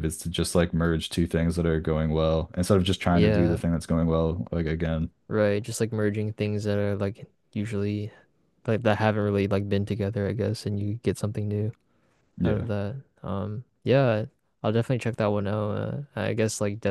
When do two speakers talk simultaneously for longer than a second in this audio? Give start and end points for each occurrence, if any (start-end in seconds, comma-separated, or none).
none